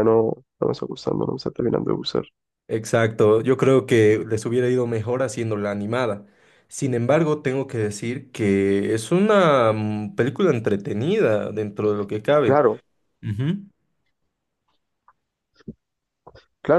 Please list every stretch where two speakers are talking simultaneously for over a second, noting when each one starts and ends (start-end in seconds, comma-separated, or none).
none